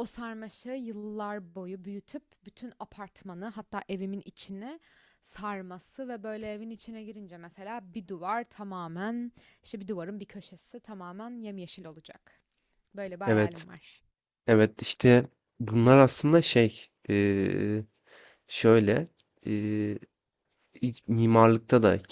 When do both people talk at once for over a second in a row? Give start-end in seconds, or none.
none